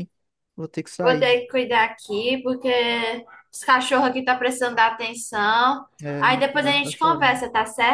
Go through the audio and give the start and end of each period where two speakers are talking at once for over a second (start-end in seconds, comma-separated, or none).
6.0-7.4